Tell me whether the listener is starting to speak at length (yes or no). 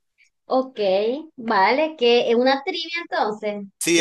yes